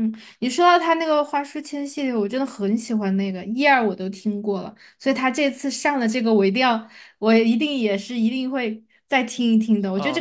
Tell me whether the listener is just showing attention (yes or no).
no